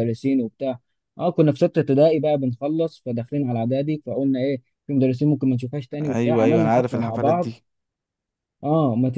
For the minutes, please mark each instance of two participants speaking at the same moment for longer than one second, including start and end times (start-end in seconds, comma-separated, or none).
6.0-7.5